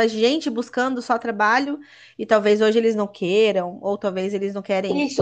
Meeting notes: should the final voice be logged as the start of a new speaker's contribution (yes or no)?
yes